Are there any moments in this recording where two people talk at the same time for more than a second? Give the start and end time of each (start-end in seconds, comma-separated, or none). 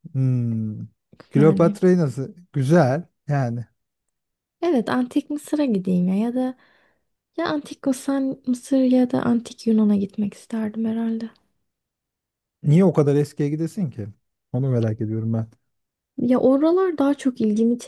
none